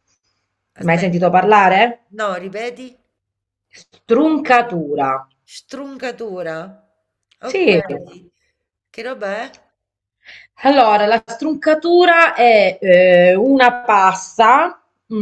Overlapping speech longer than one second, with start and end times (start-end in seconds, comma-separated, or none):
none